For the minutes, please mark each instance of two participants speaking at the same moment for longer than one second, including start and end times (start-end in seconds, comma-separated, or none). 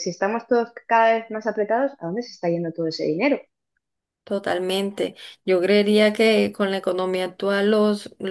none